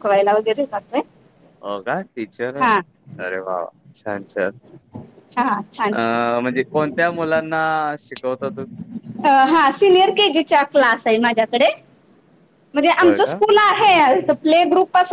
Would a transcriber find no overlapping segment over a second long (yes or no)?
yes